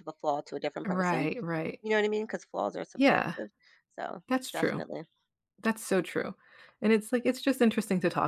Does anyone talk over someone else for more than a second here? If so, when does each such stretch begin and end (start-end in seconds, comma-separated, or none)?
none